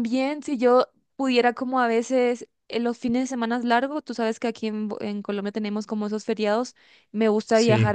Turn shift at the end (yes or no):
no